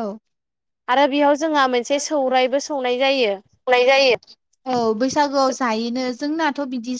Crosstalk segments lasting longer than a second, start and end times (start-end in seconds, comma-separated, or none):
none